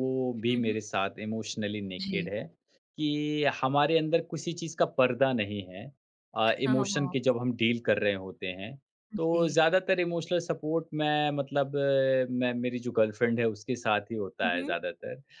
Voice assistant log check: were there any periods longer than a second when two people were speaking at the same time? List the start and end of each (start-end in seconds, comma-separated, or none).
none